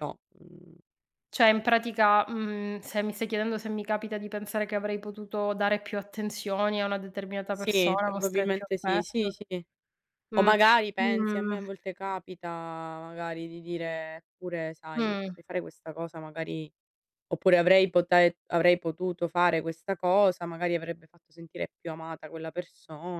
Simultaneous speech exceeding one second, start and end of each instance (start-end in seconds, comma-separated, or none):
7.5-9.3